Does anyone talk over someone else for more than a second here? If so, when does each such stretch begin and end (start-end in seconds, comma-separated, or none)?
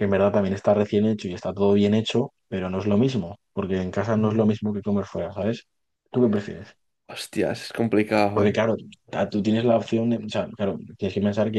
none